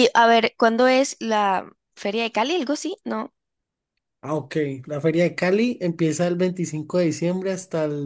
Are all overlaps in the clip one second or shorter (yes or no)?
yes